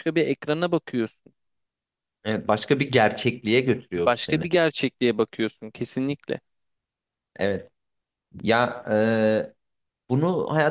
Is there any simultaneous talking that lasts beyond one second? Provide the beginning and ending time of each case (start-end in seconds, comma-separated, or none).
none